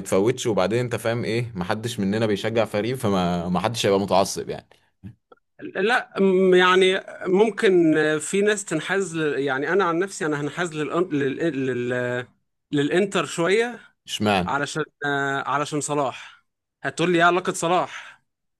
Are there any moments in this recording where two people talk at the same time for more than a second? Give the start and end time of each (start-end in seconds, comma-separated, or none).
none